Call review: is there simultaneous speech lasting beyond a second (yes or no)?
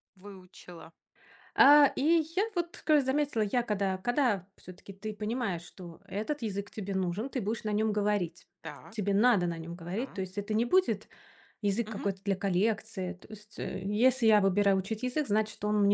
no